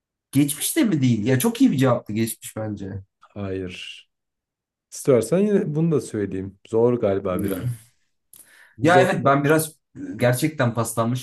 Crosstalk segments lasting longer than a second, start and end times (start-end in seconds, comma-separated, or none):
none